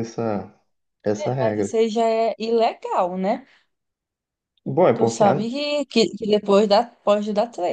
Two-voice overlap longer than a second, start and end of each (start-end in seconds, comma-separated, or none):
none